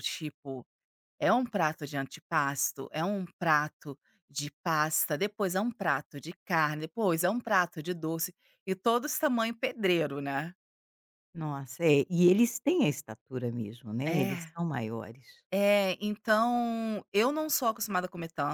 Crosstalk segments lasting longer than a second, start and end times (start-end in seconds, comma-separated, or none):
none